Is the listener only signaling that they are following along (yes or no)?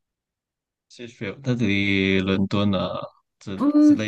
no